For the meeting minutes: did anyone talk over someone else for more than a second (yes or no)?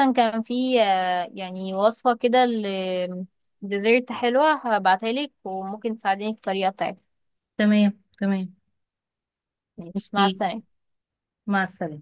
no